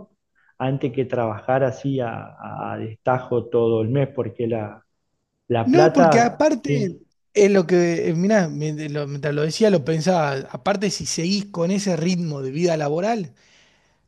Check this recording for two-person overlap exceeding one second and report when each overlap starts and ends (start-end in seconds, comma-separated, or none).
5.6-7.0